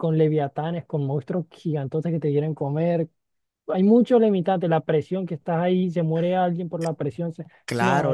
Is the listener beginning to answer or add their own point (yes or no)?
yes